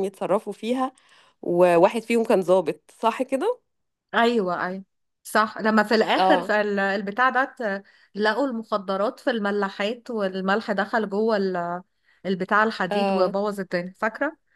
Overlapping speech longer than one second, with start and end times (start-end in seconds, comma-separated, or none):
none